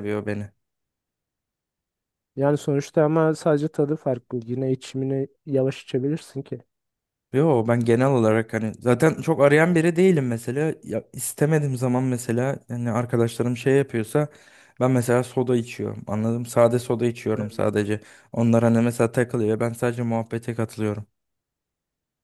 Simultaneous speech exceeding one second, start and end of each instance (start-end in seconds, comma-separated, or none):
none